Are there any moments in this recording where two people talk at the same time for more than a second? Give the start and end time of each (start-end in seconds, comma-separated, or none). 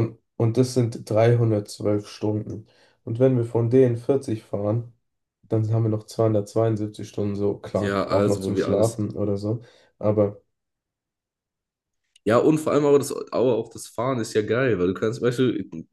7.7-9.0